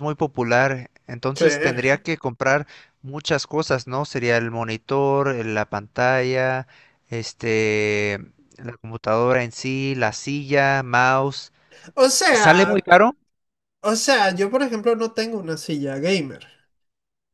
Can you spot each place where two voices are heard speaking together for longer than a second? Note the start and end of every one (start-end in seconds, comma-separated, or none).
none